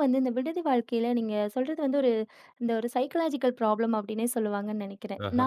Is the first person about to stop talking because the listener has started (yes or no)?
no